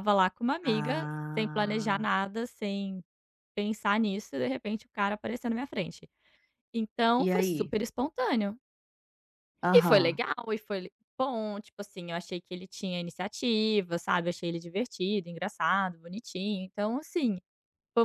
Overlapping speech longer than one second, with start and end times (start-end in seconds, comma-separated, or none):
0.6-2.0